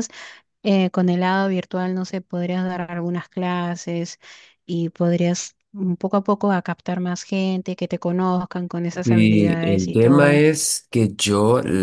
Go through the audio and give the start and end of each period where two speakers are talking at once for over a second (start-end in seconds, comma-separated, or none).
9.0-10.4